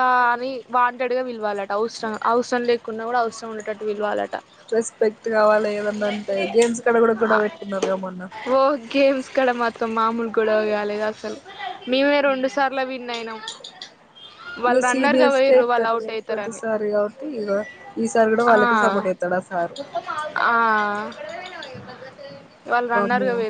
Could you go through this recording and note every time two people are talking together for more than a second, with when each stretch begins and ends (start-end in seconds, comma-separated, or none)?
14.7-16.6